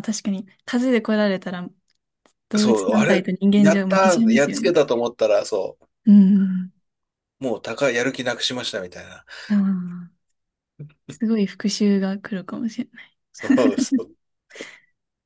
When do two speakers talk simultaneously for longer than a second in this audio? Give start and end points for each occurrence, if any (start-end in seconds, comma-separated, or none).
2.6-4.7